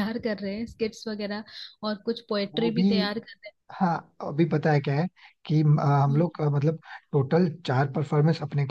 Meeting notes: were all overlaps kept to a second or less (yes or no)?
yes